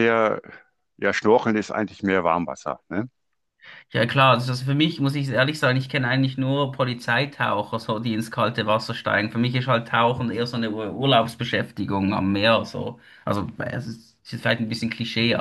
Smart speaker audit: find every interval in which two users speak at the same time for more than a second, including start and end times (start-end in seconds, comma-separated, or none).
none